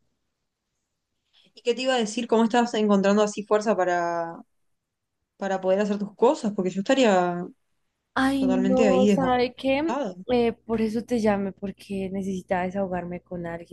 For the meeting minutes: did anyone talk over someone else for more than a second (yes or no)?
yes